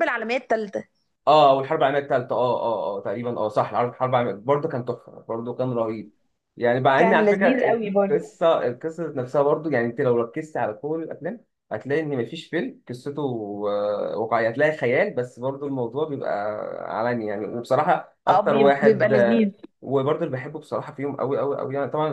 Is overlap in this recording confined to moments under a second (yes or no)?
no